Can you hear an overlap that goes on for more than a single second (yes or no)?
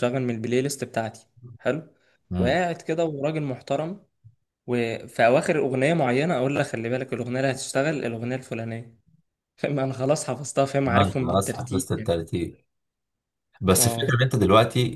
yes